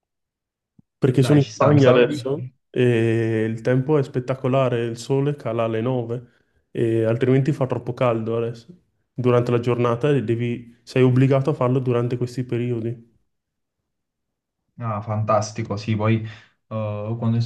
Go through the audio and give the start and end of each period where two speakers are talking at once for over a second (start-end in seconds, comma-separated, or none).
1.2-2.5